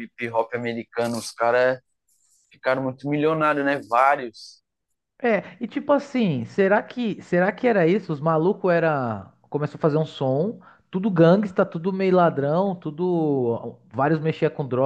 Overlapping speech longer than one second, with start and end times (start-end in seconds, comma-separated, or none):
none